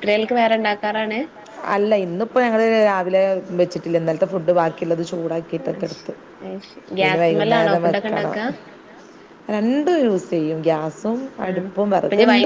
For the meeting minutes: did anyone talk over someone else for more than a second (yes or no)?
yes